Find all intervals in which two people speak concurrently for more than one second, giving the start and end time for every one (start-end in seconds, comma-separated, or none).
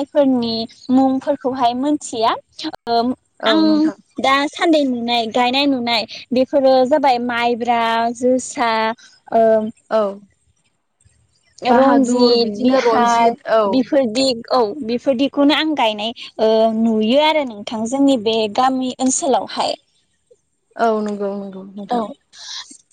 11.8-13.3